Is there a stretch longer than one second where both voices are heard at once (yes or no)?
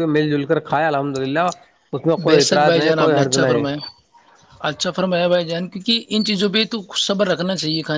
yes